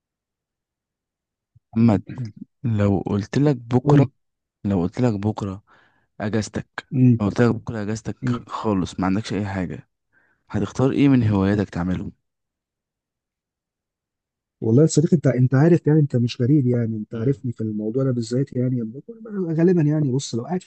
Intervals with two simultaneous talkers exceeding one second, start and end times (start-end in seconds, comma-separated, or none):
none